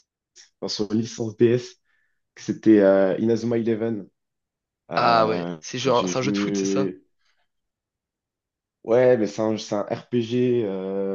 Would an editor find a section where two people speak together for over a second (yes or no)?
yes